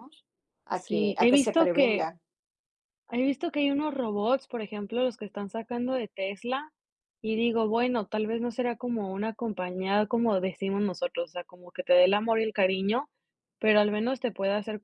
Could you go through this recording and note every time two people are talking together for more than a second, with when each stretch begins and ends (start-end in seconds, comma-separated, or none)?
0.7-2.1